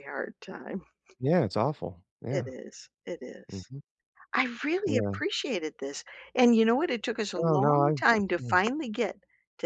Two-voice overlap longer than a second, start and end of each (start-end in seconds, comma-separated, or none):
7.4-8.6